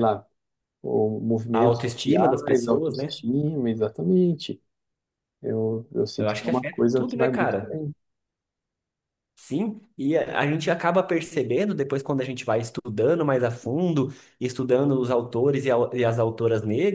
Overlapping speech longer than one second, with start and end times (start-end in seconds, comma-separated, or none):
1.5-3.2, 6.2-7.8